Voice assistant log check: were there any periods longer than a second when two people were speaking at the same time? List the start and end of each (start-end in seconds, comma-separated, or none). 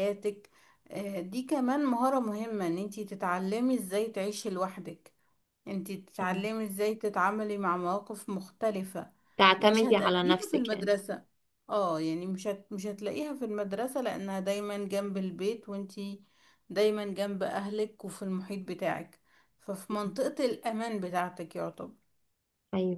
9.6-10.9